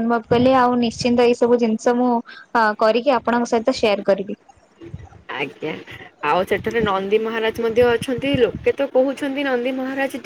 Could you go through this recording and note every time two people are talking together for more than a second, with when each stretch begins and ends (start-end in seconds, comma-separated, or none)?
none